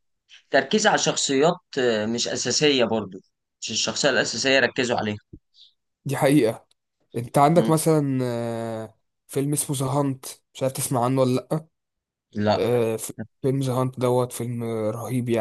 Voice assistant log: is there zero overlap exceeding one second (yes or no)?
yes